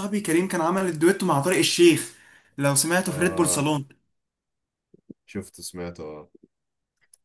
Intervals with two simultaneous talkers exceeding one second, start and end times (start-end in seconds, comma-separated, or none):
none